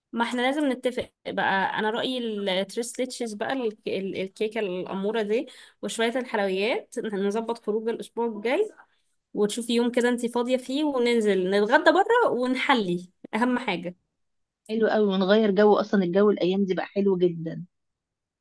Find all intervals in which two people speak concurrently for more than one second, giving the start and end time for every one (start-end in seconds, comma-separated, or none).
none